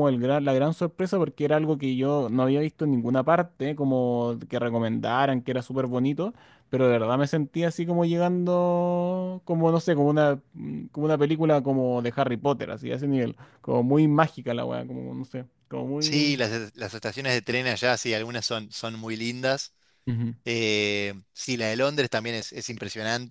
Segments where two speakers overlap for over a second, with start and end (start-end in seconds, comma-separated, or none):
none